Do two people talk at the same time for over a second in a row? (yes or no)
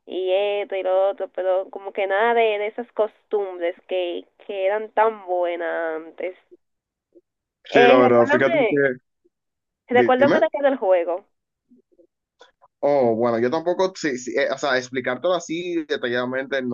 yes